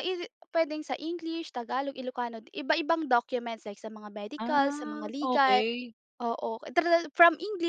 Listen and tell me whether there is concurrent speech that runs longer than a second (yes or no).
yes